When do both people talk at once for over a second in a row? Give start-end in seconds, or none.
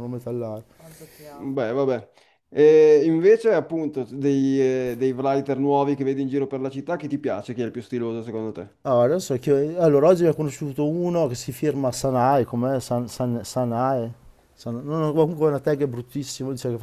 none